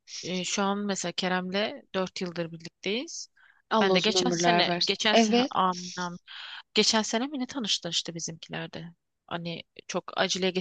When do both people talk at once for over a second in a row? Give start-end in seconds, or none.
3.8-5.5